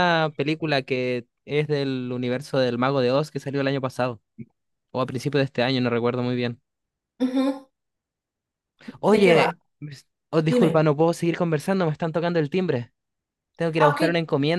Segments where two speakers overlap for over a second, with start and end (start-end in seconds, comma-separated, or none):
none